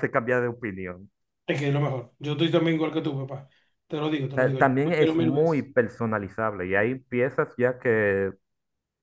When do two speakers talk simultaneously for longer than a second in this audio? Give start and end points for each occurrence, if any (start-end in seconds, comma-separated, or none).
4.3-5.7